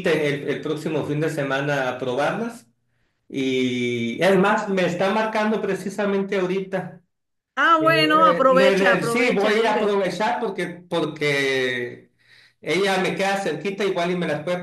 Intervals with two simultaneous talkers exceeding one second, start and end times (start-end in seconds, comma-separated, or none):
7.8-10.0